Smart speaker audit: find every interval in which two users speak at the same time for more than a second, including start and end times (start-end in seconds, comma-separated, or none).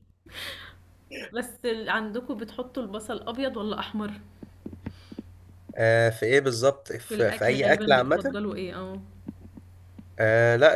7.1-8.4